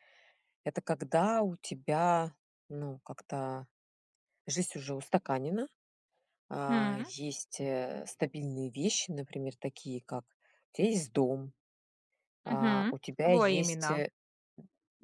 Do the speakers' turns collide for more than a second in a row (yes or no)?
yes